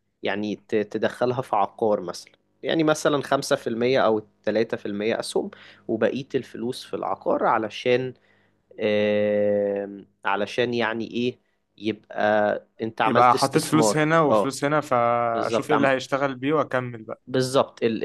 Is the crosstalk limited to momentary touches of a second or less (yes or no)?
no